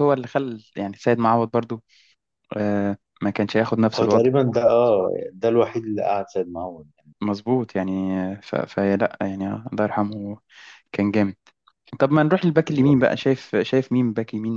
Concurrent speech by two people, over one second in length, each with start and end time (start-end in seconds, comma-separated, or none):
none